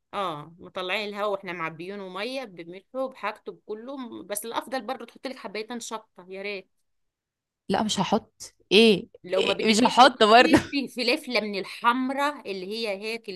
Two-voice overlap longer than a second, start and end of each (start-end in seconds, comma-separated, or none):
9.2-10.6